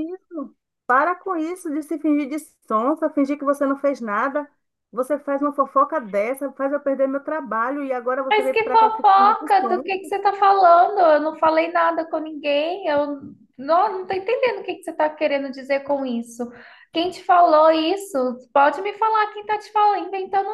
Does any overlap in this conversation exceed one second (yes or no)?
yes